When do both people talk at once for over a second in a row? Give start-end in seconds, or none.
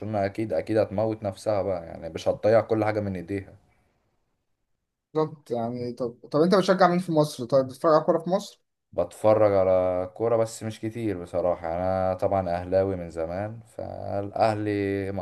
none